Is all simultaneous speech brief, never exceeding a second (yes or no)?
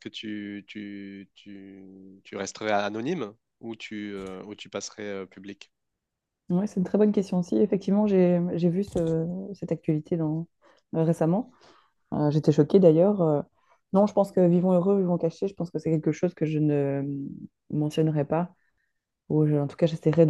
yes